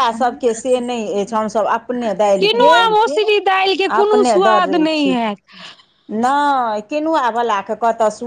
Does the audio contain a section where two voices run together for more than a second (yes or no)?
no